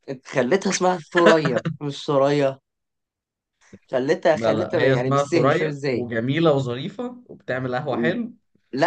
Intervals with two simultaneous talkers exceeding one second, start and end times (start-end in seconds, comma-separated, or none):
4.3-6.0